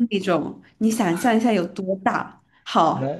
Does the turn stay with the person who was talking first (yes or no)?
yes